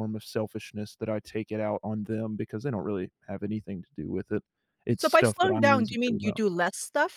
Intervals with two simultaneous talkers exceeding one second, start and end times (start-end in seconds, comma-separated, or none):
5.0-6.4